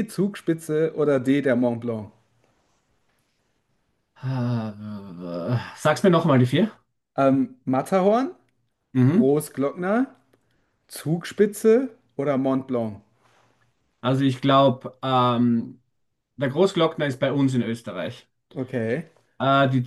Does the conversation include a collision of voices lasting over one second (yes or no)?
no